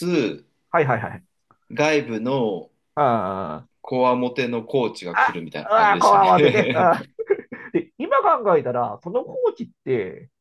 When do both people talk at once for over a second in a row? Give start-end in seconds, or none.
5.1-6.7